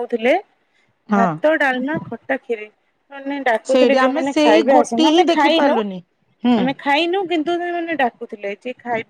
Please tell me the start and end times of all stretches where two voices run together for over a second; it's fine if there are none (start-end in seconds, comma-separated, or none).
3.7-5.7